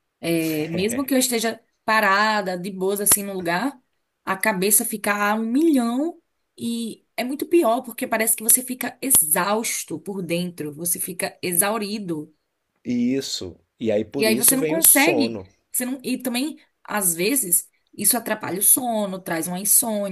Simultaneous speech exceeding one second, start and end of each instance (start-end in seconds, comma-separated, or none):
14.2-15.5